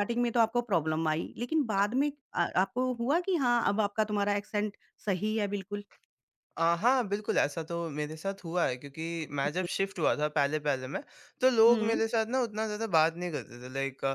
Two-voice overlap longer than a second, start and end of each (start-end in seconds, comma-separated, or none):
none